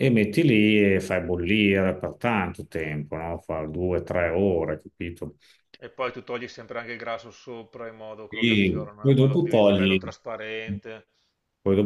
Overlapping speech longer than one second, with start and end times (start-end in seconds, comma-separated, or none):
8.3-10.0